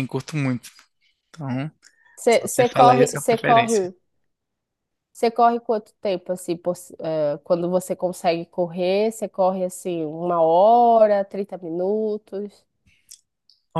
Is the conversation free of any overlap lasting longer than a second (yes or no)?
no